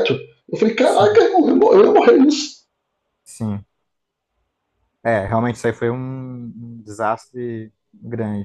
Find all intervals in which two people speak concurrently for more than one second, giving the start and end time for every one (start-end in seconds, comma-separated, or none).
none